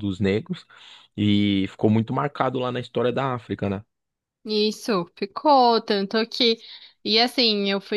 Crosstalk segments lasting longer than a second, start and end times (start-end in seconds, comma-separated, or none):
none